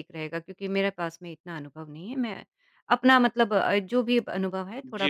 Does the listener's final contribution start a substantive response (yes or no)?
yes